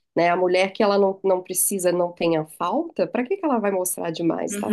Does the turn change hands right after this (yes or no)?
yes